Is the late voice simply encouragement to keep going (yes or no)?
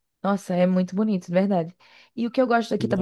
yes